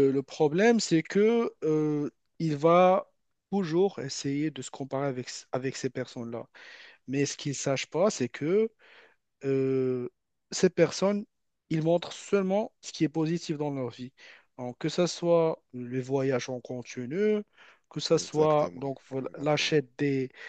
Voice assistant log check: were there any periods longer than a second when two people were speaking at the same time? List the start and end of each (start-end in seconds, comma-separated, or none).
18.2-19.8